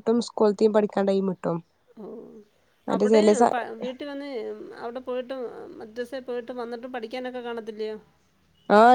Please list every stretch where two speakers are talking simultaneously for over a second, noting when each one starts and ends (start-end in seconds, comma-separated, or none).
none